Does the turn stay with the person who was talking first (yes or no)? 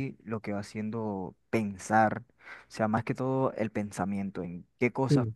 yes